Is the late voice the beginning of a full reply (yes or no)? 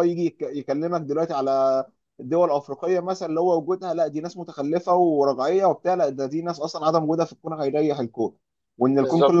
no